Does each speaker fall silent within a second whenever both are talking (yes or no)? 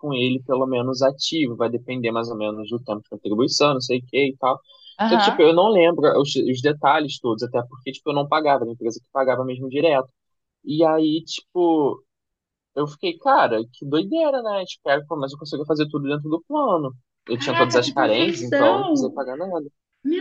no